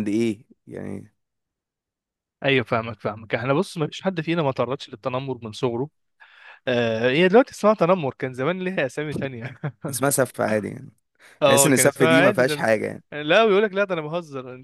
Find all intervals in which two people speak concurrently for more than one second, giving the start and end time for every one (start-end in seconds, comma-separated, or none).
11.4-12.6